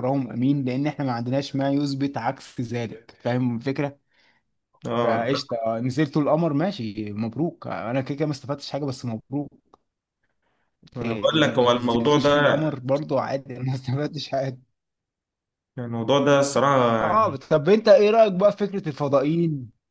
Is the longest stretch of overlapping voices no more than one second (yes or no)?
no